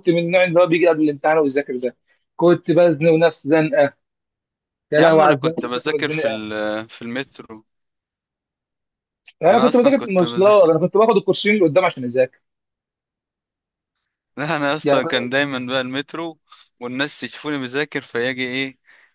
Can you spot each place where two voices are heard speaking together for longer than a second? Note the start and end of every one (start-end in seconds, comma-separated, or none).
5.0-6.4, 9.5-10.7